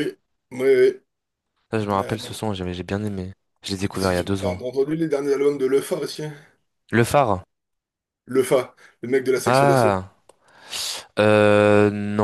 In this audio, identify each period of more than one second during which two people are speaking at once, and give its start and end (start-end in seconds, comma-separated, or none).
none